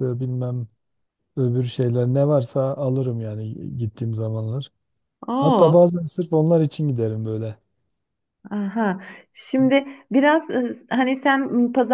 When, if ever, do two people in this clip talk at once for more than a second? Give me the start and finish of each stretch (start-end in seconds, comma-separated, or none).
none